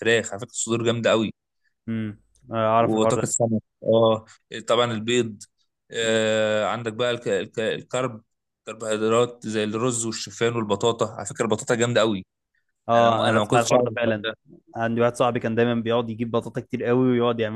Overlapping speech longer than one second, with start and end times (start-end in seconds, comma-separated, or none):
12.9-14.3